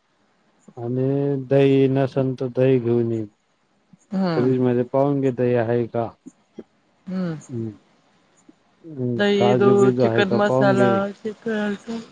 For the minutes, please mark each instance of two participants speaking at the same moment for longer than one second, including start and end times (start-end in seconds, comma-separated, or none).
9.2-10.9